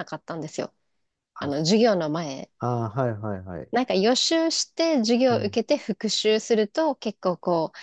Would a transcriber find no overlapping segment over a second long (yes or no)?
yes